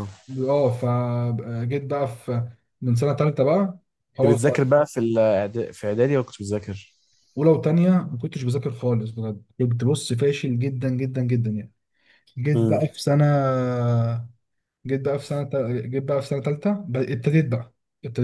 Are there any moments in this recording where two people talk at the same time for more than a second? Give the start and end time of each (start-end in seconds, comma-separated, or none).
none